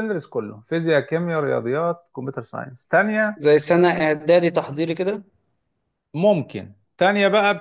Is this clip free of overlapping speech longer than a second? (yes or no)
yes